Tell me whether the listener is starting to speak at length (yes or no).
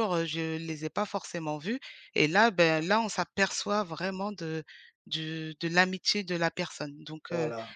no